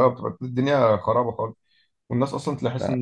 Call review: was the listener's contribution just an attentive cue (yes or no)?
yes